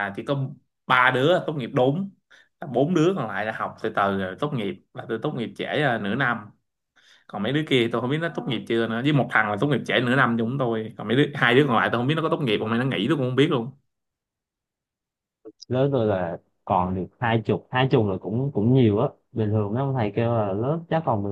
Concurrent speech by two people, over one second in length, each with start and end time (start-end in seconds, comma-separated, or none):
none